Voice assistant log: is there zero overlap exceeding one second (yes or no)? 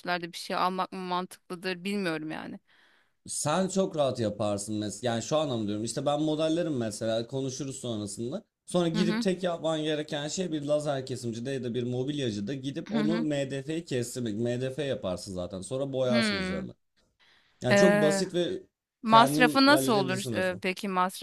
no